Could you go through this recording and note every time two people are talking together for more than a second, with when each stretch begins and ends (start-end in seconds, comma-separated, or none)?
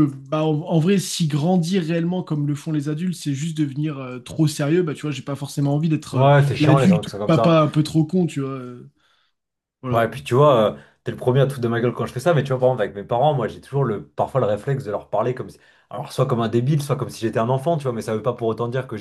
6.1-7.5